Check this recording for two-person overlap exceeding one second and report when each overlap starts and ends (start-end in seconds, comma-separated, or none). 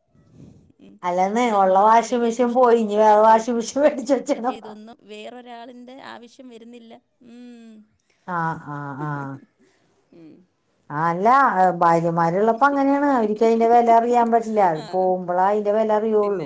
1.4-3.6